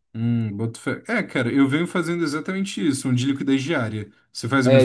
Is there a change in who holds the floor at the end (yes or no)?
yes